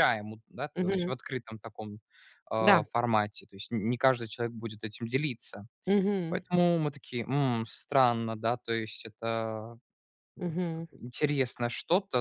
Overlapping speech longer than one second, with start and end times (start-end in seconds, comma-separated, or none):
none